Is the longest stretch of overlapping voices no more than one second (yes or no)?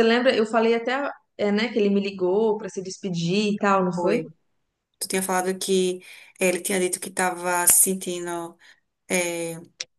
yes